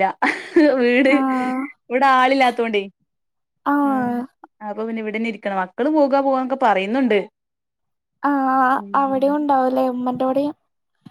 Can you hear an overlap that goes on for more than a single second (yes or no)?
no